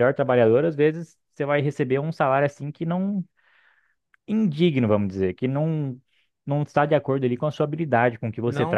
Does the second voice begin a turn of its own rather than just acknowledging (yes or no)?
yes